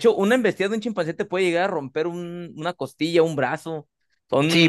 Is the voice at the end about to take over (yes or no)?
yes